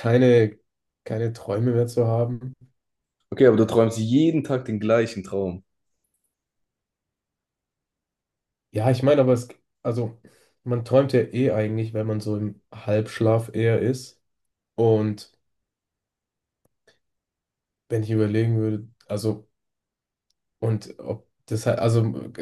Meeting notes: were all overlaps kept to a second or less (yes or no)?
yes